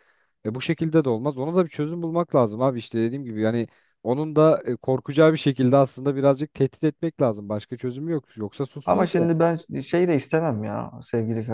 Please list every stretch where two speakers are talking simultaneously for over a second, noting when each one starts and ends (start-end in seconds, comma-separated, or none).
none